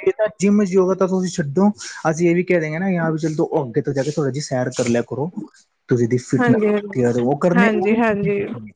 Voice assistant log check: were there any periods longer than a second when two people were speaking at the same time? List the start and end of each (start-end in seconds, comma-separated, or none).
none